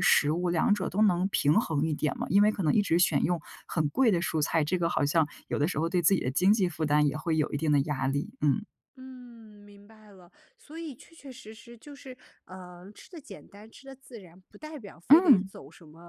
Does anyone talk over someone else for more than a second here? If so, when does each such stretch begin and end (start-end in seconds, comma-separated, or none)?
none